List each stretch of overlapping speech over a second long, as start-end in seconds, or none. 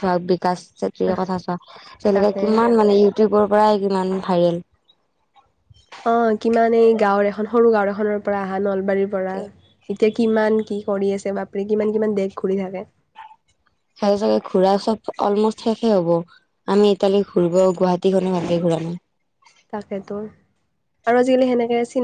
none